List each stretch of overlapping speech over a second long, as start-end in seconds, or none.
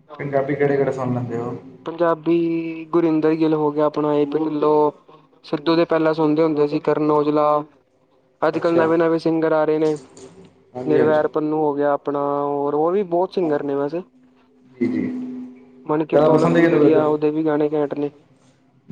15.9-17.1